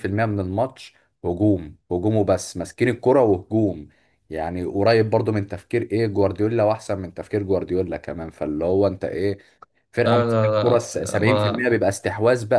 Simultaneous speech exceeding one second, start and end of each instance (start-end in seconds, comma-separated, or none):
10.1-11.6